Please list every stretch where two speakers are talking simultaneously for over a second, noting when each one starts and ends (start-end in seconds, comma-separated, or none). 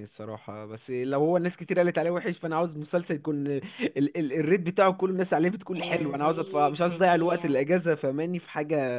5.8-7.6